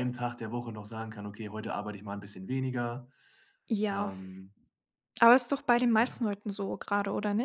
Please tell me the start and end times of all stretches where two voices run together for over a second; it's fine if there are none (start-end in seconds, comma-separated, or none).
none